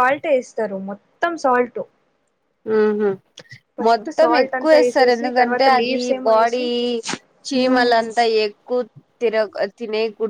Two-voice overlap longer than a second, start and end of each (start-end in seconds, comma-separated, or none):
4.2-6.6